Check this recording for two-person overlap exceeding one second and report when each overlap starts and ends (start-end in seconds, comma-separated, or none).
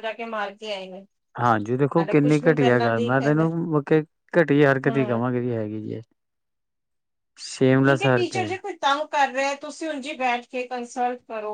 2.0-3.5